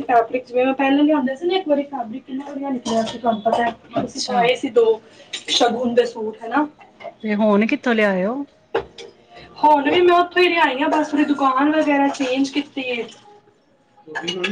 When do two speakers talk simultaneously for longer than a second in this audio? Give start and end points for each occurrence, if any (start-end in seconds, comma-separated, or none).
none